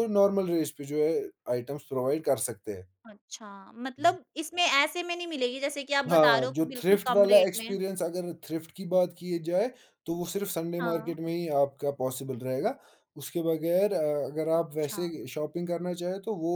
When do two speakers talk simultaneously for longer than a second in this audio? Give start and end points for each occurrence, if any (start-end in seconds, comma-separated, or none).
6.1-7.8